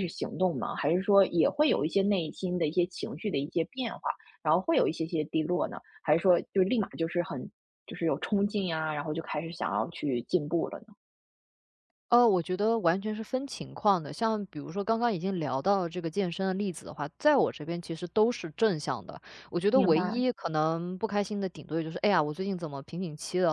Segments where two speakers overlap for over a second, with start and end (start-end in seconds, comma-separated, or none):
none